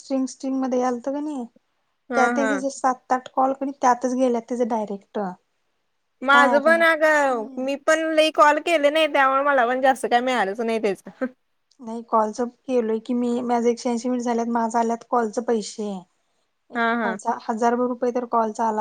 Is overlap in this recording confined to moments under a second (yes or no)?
no